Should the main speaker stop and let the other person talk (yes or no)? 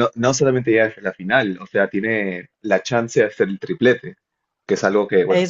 no